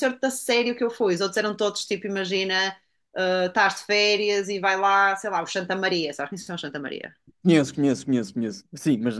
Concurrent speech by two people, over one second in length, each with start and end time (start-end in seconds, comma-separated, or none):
none